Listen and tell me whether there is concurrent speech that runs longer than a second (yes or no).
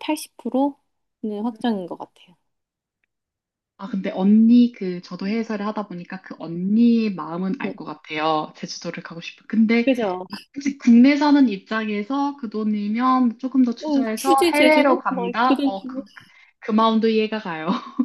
yes